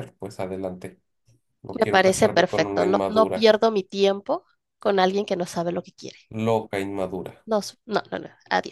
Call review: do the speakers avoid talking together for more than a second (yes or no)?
no